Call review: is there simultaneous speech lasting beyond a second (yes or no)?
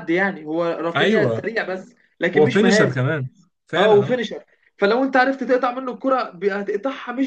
no